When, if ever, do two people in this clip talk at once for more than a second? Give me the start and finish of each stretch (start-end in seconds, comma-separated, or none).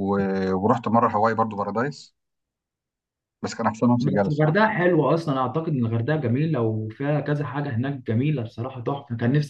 none